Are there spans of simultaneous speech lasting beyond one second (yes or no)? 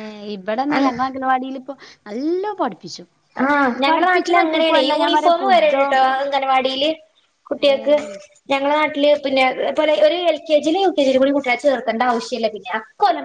yes